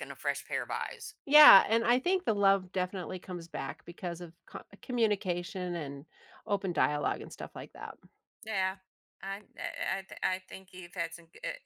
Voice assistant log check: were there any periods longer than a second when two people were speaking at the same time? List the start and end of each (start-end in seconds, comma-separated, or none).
none